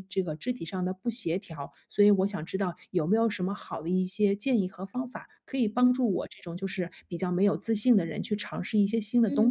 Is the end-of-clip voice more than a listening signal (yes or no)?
yes